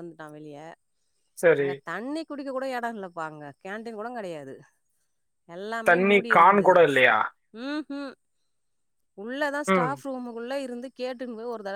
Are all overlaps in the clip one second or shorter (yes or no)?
yes